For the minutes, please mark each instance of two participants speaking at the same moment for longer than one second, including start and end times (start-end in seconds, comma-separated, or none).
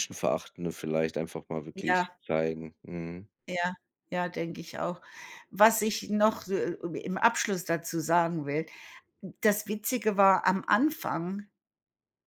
none